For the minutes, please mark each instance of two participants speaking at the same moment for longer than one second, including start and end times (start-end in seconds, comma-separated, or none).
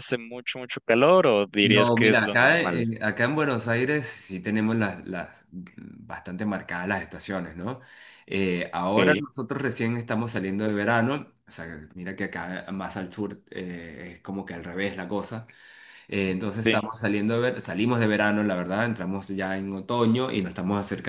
1.6-2.9